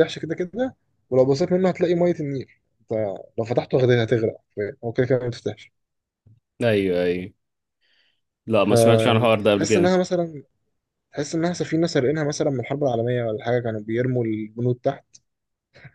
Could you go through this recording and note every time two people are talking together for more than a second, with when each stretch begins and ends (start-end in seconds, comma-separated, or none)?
8.6-9.9